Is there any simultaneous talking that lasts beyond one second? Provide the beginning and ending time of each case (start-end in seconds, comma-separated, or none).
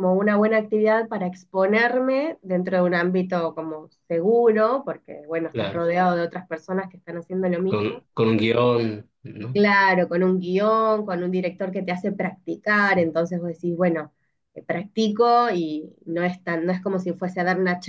none